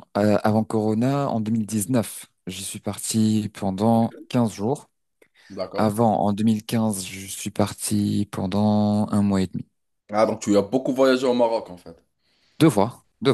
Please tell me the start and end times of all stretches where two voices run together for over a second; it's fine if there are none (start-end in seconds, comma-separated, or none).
none